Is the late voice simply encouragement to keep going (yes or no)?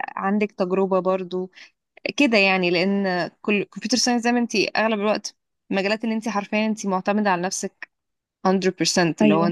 yes